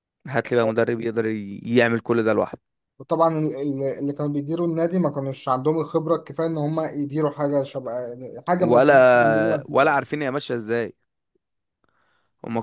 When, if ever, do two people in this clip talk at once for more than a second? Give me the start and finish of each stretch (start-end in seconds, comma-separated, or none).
8.6-10.0